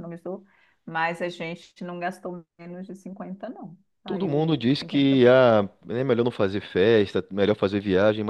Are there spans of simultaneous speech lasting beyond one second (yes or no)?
yes